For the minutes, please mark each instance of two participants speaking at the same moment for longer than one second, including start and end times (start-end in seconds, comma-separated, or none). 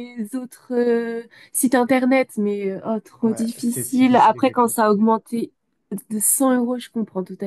3.2-4.7